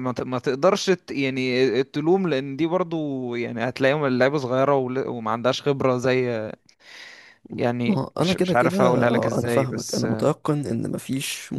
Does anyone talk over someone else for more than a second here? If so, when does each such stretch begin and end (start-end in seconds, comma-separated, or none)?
7.9-10.1